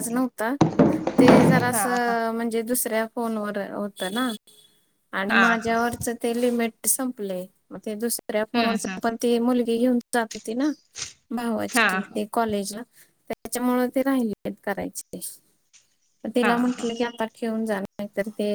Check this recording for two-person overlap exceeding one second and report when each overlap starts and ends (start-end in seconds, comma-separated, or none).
none